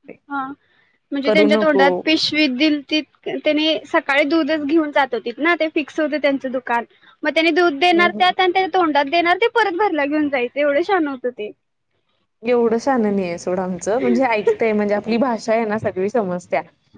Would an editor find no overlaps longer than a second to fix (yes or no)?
yes